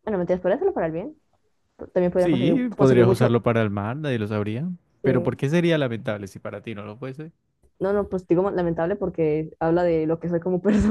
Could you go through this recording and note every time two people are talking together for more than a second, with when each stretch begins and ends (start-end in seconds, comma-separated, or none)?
2.2-3.4